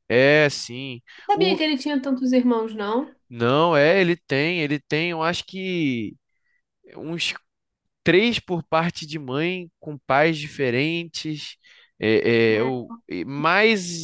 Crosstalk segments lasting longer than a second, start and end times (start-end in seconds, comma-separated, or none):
none